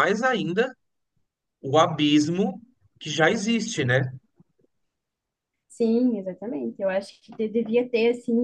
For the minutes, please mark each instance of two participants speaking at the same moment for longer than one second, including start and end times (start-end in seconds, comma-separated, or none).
none